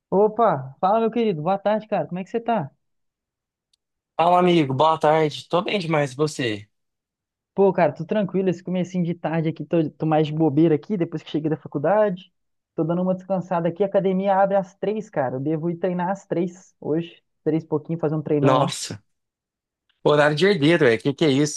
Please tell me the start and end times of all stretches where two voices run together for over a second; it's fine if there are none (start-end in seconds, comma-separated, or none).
none